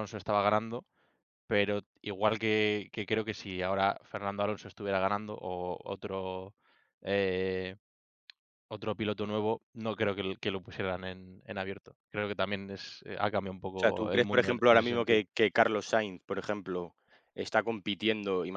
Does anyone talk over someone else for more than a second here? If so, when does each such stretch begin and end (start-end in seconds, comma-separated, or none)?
13.8-15.2